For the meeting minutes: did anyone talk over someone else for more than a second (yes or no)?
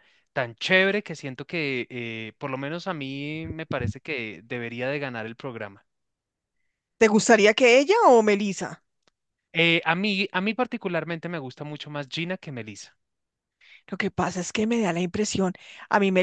no